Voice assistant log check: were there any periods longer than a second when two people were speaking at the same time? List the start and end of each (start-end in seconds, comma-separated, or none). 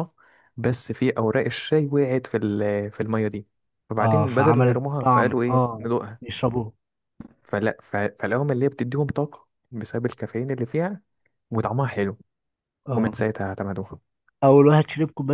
4.0-6.3